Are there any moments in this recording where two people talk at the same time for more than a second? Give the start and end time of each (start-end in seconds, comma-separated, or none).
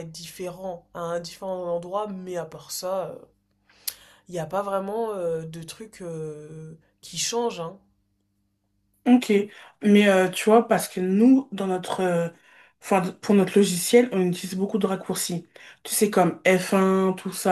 none